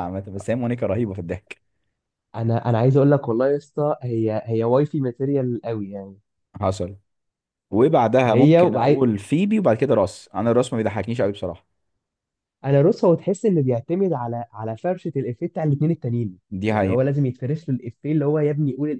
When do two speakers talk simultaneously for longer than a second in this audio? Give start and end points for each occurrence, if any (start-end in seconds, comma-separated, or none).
none